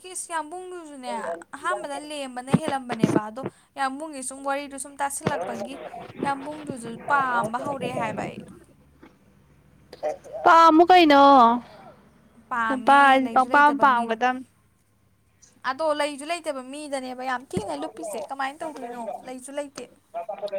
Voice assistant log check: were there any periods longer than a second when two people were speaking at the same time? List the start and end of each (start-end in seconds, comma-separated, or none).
12.7-14.2